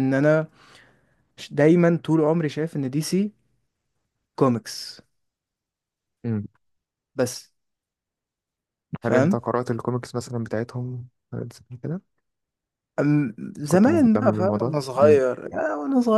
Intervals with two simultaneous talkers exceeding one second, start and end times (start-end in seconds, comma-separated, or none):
13.7-15.2